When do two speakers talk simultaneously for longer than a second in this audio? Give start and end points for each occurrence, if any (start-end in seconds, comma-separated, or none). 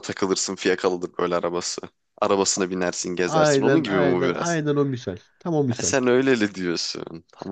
3.2-4.6